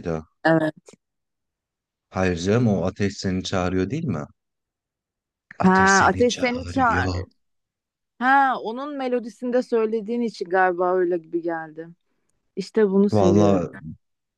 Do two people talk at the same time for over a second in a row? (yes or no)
yes